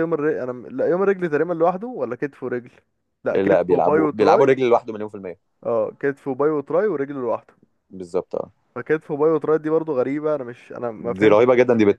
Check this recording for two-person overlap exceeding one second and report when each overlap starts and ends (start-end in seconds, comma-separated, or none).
3.3-4.5